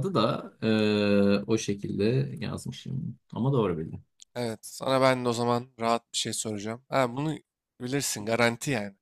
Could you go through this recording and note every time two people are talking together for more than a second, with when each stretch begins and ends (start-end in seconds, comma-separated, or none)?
none